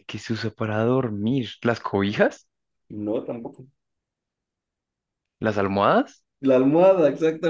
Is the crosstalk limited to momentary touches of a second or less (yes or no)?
yes